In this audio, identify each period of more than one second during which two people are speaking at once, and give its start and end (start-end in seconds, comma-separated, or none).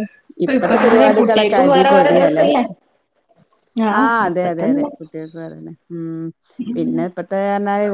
0.6-2.5